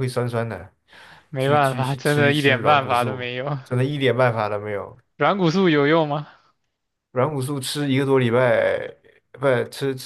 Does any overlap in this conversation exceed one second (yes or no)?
yes